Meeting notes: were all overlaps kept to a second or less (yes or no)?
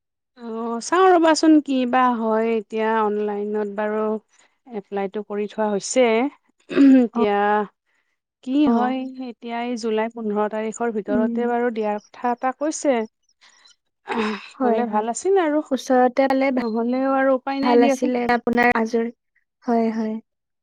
no